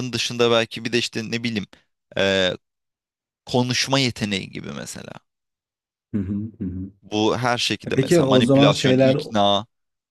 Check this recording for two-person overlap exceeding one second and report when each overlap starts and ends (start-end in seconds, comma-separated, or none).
7.9-9.2